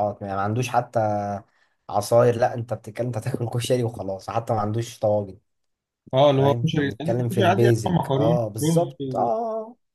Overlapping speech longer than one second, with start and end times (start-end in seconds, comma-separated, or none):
6.4-9.3